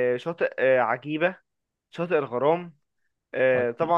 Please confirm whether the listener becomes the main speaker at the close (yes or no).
no